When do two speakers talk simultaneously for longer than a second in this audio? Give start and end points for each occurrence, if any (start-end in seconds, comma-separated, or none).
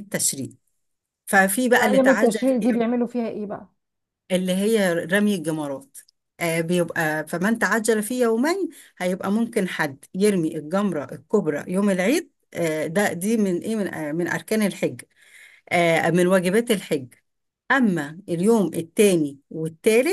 1.7-2.9